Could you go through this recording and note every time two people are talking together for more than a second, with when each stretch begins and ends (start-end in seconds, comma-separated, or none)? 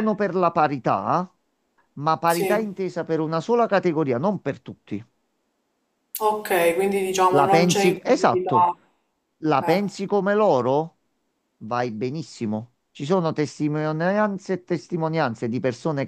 7.3-8.7